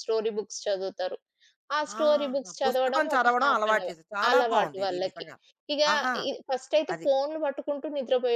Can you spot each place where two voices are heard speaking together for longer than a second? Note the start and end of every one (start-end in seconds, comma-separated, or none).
2.0-5.3